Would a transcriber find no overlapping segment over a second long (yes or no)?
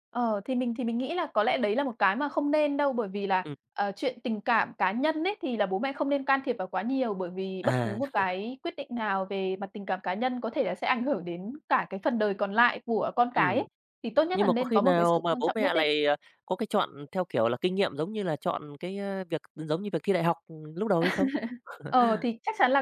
no